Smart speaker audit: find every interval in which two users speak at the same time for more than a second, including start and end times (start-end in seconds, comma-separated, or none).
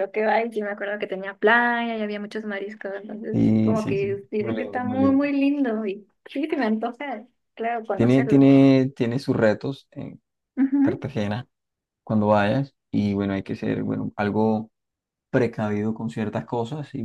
3.3-5.3